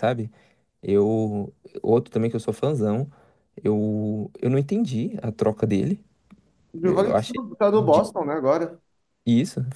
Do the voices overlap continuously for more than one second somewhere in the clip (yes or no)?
yes